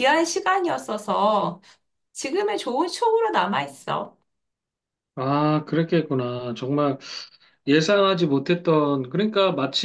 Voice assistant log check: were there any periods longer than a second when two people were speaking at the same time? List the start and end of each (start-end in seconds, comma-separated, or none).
none